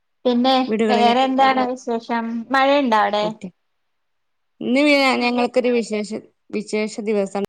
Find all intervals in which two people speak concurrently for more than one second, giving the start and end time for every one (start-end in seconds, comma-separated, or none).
0.9-3.2